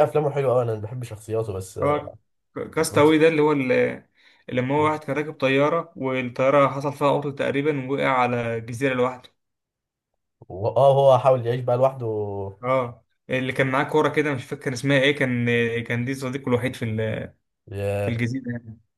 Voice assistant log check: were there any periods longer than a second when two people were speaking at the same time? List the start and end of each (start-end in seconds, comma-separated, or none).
none